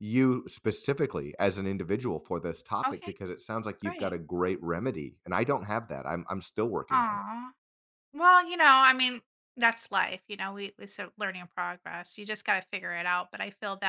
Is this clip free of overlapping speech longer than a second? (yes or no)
yes